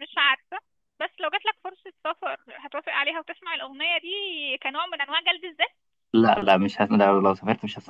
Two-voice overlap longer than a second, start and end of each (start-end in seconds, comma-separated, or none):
none